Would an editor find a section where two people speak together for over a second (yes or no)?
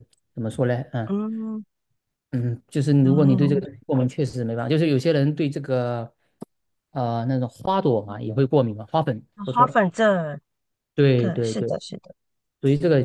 no